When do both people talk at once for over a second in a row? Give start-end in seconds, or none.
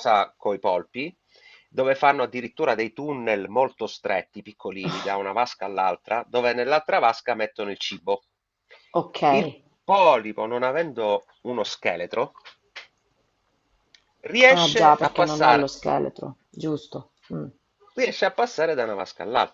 14.5-15.7